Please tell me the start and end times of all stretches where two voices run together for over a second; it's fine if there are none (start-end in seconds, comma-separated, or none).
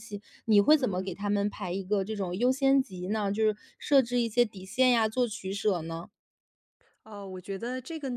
none